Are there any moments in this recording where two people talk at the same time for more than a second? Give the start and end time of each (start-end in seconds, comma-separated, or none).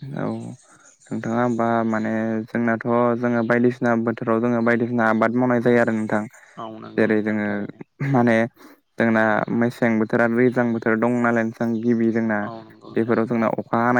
none